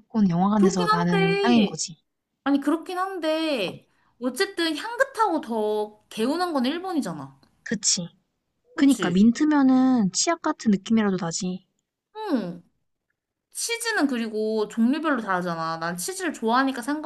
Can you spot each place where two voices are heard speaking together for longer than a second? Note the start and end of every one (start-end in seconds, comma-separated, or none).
0.6-1.8